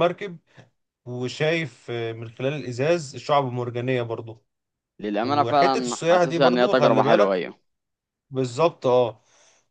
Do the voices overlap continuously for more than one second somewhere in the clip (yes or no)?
yes